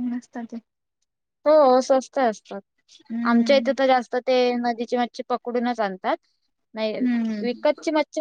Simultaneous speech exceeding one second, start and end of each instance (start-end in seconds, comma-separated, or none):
none